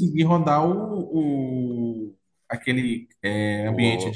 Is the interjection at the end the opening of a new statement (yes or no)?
no